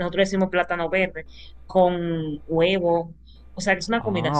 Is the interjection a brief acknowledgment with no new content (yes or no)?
yes